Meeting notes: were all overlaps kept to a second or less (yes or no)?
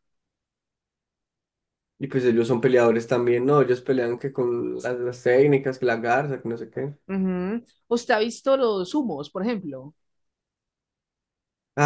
yes